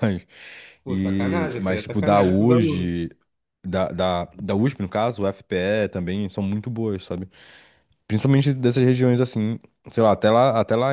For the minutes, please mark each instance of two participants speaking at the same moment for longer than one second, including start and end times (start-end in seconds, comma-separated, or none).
0.9-3.0